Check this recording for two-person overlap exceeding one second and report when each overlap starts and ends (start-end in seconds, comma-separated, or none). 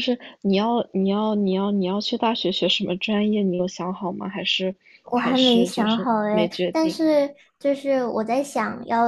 5.1-7.0